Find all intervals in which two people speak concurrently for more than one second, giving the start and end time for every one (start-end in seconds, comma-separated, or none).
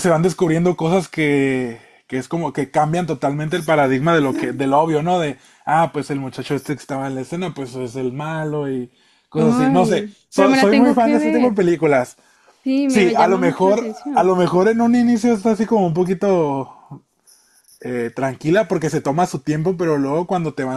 9.3-11.6, 12.8-14.3